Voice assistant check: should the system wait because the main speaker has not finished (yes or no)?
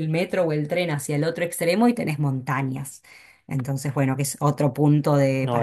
yes